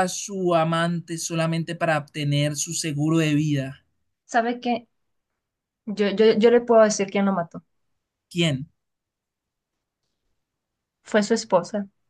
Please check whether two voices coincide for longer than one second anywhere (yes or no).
no